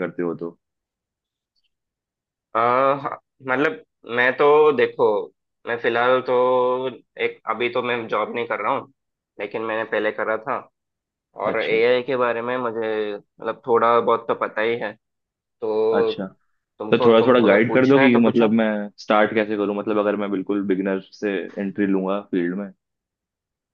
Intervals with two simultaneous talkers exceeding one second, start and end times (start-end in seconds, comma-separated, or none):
16.9-18.6